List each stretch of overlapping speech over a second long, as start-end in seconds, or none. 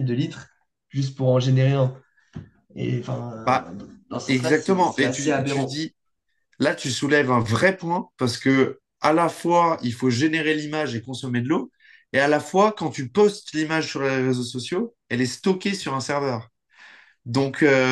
4.3-5.8